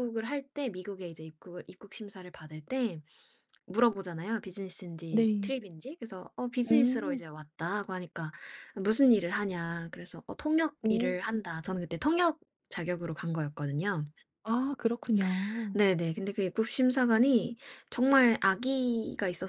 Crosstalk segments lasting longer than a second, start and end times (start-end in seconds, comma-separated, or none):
none